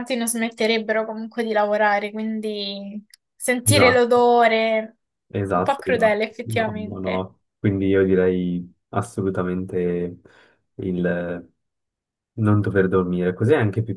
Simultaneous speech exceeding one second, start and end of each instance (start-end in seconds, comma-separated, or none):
5.5-7.3